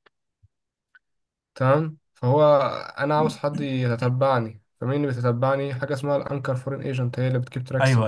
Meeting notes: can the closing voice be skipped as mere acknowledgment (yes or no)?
no